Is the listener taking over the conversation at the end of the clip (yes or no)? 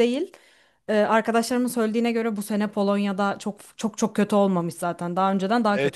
yes